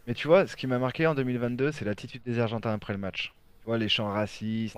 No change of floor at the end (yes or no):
yes